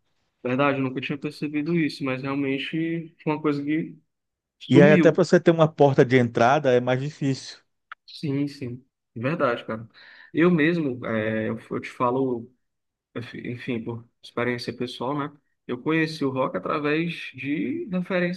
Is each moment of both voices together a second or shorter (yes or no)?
yes